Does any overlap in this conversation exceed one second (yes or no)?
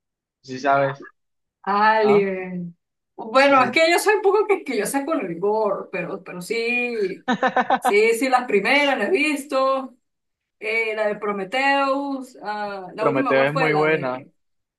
yes